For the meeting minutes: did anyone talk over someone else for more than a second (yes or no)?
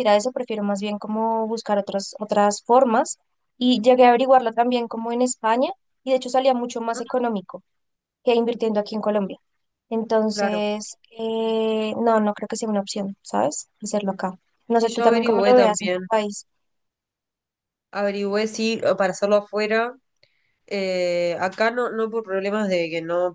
yes